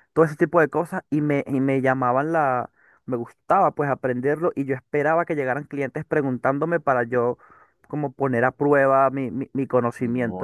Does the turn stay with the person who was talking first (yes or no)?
no